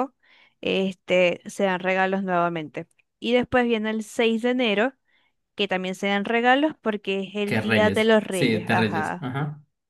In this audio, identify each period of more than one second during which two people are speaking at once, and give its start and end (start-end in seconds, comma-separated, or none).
7.5-9.3